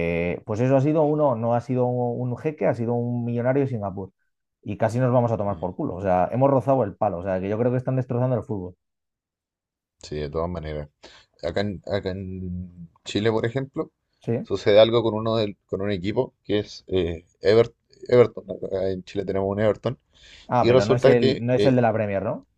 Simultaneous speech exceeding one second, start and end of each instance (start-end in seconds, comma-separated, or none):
20.6-21.8